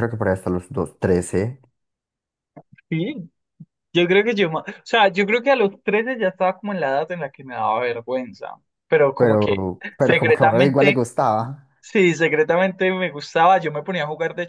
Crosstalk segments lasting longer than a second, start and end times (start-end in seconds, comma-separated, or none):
9.2-11.1